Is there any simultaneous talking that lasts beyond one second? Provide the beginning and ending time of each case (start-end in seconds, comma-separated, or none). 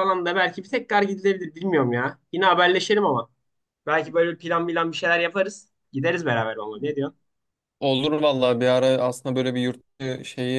none